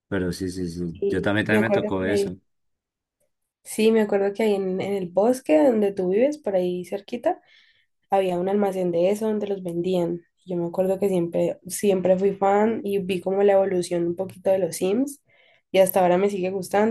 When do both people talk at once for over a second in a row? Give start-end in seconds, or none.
0.9-2.3